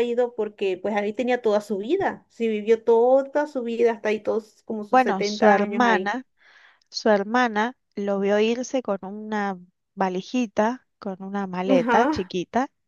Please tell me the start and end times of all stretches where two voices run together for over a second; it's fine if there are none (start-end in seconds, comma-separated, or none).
4.9-6.2